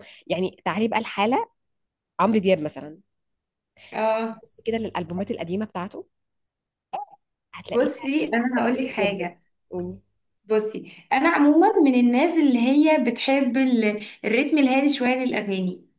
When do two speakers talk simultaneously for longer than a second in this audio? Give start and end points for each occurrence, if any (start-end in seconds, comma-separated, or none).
7.7-9.3